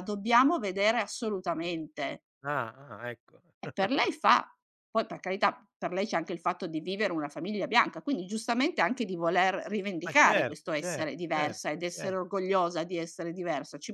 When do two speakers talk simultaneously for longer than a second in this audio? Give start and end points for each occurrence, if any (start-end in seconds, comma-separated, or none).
10.0-12.2